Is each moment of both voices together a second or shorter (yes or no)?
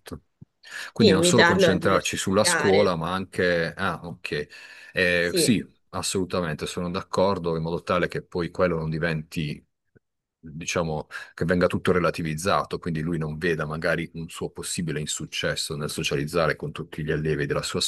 no